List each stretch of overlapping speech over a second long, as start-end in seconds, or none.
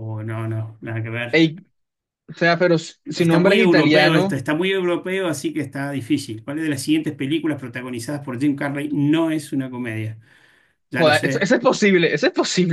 3.1-4.4